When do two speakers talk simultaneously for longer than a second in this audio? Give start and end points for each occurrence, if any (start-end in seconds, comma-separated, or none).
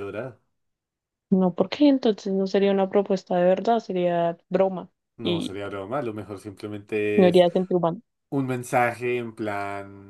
none